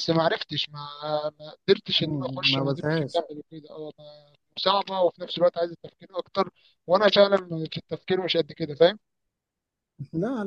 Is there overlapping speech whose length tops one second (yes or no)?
yes